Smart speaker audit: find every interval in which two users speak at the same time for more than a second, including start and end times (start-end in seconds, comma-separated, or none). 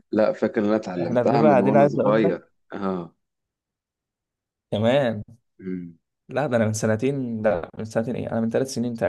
1.0-2.3